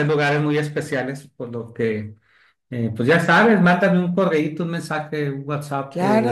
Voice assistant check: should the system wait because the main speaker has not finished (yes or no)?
no